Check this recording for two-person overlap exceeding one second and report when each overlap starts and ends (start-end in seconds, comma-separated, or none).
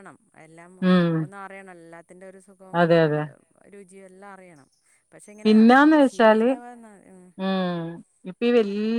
none